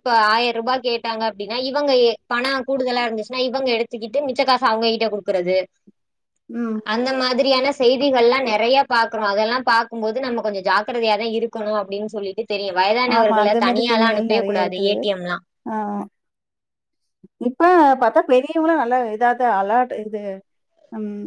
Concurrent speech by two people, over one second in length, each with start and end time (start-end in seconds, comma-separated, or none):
13.2-14.9